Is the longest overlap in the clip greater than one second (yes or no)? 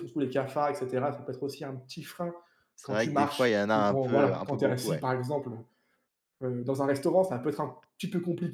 yes